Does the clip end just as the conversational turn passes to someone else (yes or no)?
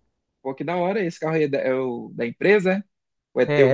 yes